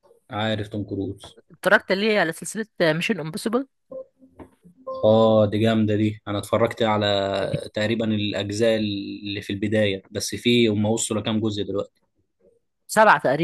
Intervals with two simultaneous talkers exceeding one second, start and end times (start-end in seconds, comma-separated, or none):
none